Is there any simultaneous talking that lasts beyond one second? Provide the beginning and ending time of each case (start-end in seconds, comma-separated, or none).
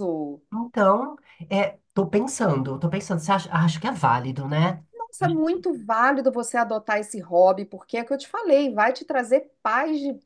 none